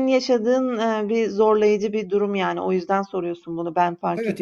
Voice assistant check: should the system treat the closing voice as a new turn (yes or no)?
yes